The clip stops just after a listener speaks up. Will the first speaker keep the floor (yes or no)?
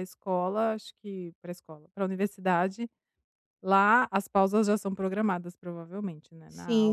no